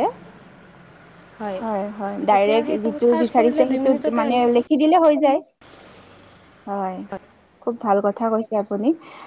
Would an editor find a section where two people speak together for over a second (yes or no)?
yes